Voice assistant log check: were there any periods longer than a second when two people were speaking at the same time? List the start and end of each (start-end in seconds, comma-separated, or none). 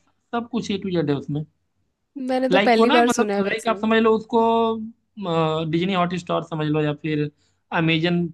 2.5-3.8